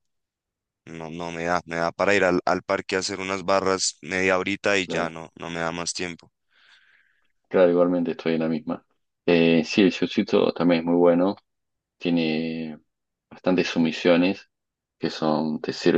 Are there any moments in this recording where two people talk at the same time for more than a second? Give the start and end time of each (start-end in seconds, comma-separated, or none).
none